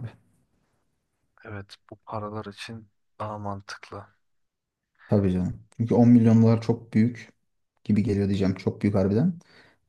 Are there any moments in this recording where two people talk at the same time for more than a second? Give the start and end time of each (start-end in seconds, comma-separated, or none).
none